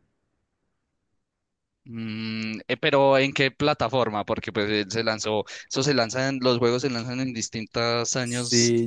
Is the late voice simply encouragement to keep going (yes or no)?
no